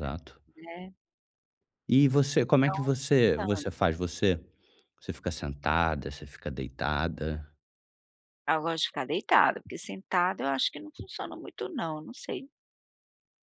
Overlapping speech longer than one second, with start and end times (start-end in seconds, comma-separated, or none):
2.4-3.7